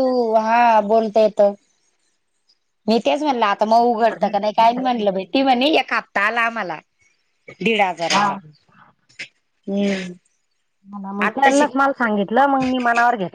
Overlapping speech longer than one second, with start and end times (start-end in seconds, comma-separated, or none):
3.8-5.2